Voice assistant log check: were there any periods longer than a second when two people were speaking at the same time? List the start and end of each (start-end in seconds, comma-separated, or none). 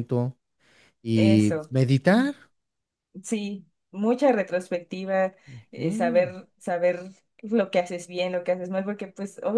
none